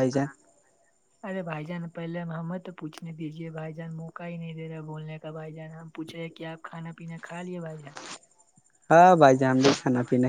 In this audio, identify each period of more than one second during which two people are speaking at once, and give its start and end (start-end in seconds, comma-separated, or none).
none